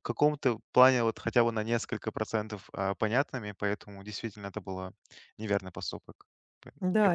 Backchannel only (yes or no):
no